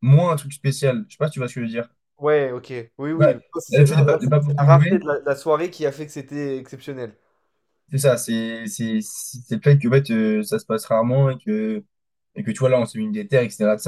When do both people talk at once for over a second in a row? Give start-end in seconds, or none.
3.1-5.0